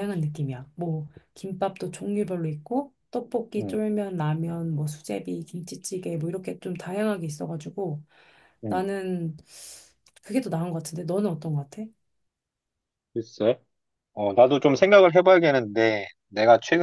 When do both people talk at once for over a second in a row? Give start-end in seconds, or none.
none